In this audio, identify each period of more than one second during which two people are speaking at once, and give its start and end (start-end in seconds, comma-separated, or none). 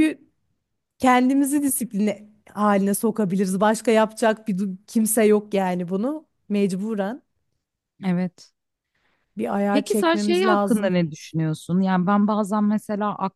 9.7-11.0